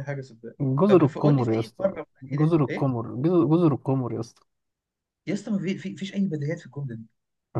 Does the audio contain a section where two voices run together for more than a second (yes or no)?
yes